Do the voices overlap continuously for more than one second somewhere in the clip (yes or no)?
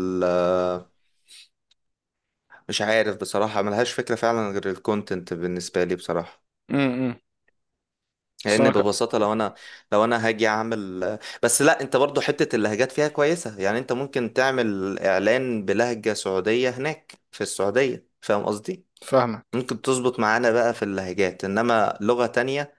no